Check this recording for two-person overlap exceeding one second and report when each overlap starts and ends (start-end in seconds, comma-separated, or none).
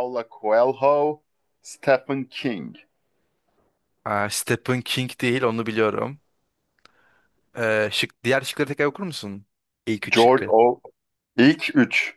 none